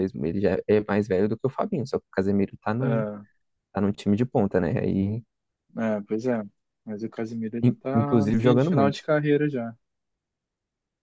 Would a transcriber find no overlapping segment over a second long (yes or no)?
no